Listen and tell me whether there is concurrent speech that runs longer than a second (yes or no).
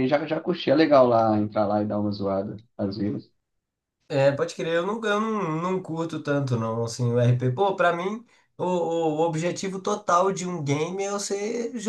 no